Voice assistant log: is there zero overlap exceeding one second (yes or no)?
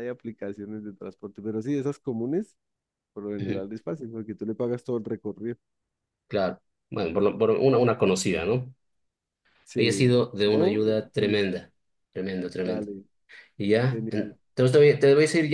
no